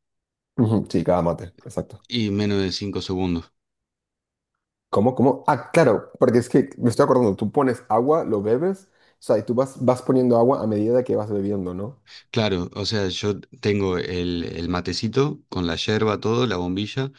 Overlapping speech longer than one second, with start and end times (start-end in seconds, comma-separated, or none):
none